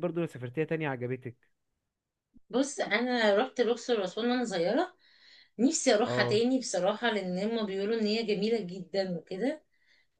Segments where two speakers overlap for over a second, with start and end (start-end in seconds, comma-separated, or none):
none